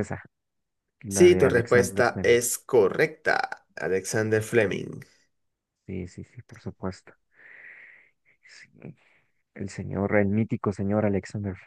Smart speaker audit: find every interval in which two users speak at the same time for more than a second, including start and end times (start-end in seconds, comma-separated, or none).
1.1-2.4